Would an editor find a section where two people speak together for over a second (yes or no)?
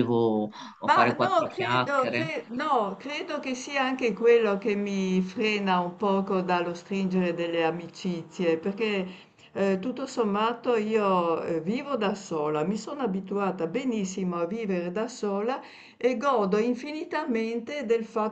yes